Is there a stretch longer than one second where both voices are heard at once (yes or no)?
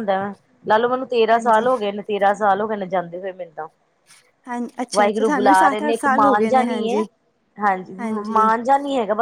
yes